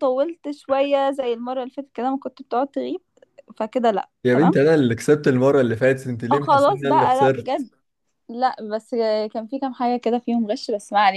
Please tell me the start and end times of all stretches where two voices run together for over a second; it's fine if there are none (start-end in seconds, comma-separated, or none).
6.3-7.7